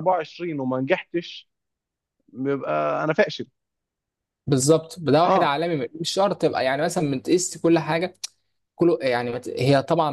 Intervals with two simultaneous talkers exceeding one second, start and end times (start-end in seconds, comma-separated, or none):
none